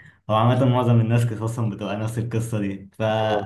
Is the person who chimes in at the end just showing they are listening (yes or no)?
yes